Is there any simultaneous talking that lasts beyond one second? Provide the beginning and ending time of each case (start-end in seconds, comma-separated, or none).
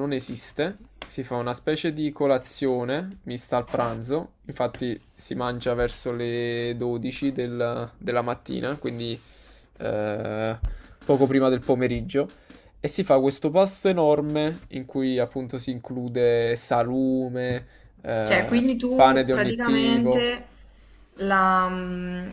18.2-20.3